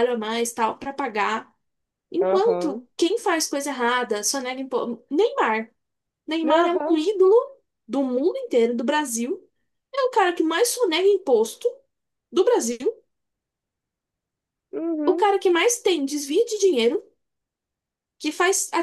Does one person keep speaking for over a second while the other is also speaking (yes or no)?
no